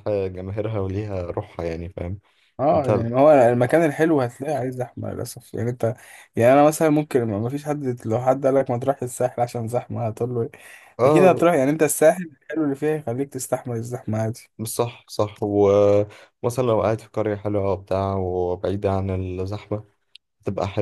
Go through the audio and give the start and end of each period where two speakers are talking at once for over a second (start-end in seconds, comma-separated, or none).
none